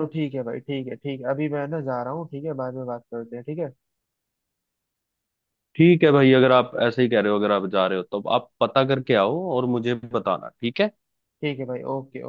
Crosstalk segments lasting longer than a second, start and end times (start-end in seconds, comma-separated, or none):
none